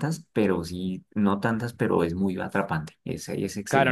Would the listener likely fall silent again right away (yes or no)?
no